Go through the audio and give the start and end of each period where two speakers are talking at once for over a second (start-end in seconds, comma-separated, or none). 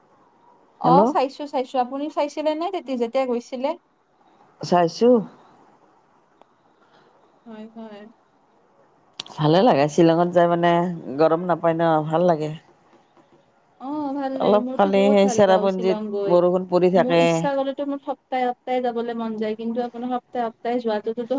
14.4-16.4